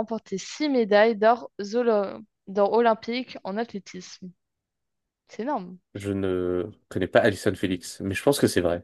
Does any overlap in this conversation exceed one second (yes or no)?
no